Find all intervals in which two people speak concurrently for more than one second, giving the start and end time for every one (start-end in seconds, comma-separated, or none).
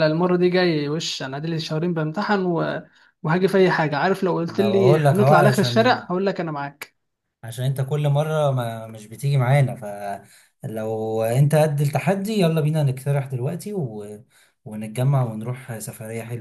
4.5-6.0